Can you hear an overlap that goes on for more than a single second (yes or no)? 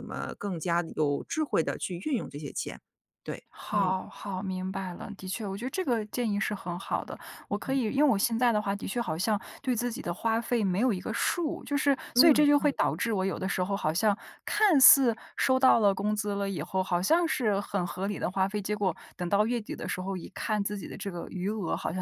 no